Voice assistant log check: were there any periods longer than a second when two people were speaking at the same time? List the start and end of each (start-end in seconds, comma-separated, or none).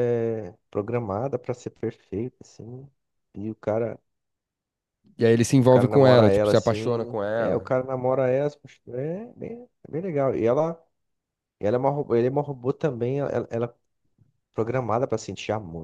5.5-7.7